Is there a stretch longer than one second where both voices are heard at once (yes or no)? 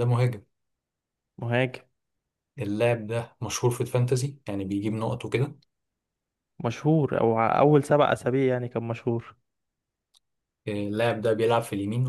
no